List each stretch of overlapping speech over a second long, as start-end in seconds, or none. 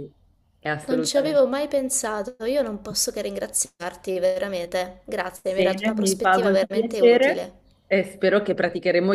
5.6-7.5